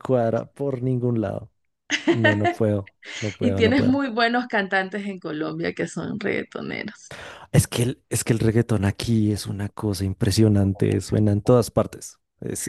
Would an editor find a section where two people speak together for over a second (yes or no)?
no